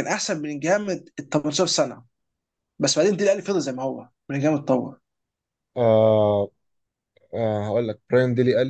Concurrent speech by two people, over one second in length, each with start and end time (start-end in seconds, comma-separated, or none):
none